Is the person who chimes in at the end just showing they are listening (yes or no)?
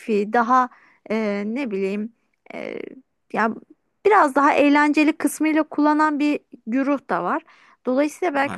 yes